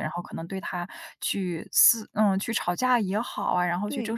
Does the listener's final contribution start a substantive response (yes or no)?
no